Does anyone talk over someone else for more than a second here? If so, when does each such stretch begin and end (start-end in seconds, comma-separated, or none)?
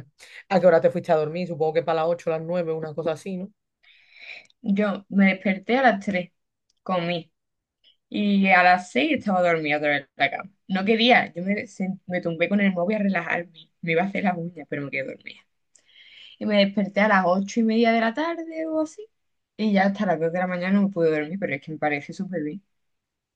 none